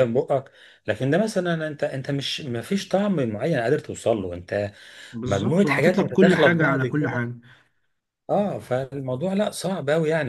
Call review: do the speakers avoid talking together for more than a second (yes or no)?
no